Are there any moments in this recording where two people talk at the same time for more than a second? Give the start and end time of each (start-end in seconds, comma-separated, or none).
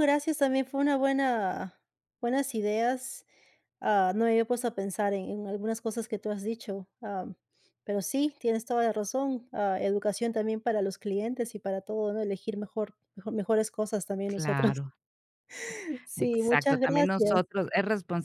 16.2-17.4